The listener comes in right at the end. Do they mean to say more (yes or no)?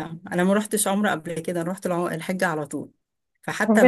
yes